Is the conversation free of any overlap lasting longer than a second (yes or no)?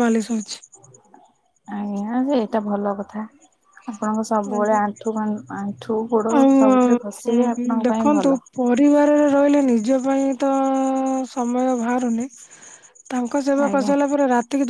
no